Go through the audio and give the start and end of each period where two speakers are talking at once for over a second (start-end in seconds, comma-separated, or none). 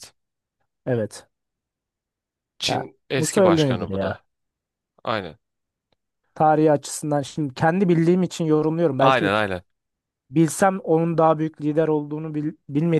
2.7-4.2